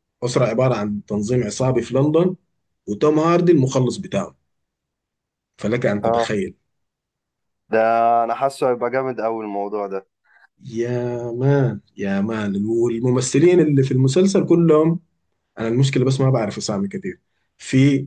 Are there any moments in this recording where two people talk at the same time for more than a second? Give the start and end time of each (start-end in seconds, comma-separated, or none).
none